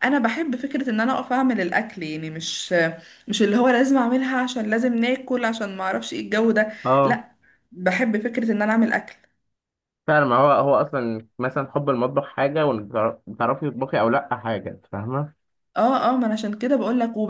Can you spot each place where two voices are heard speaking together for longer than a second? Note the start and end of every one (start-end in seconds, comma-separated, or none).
none